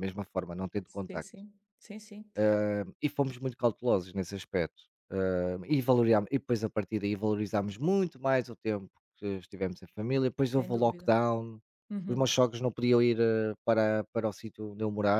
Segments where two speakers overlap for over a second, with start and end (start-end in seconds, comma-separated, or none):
none